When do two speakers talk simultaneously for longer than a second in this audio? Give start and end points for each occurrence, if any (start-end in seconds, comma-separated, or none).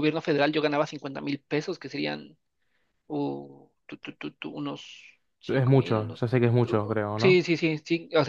5.5-7.4